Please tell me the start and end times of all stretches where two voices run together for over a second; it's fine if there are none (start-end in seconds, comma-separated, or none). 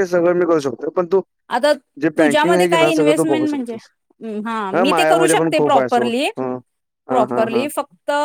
4.8-6.3